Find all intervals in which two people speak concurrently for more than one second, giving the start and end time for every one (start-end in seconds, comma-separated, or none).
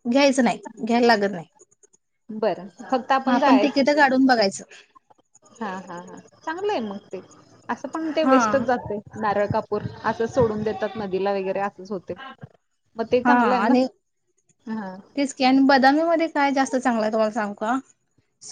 none